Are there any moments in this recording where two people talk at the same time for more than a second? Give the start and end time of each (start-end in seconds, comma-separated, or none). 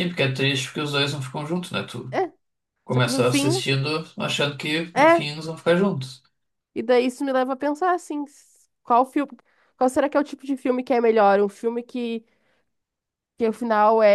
none